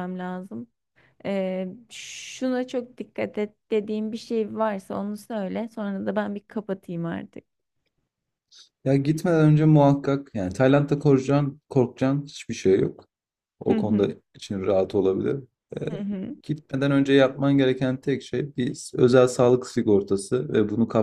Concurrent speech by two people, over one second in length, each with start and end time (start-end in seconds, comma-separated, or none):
none